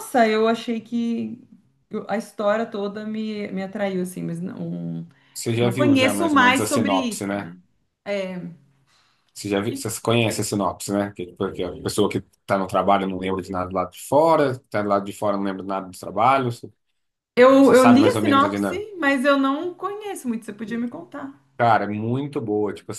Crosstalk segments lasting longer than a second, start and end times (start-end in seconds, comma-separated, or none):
5.6-7.5, 17.6-18.9